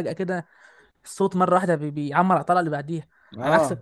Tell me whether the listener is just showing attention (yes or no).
no